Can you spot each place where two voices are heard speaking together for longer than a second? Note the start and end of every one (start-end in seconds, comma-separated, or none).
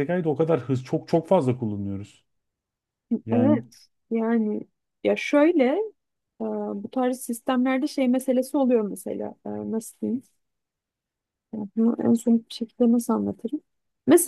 none